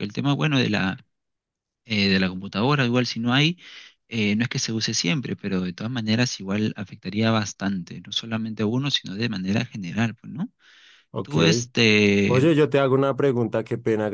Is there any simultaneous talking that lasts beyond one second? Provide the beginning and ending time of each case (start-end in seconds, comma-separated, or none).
none